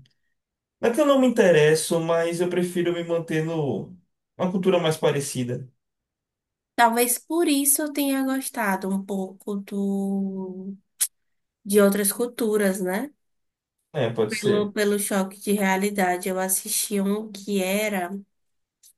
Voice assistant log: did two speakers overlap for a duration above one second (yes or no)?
no